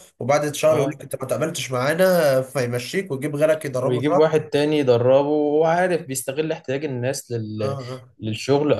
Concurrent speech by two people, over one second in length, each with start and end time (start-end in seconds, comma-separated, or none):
none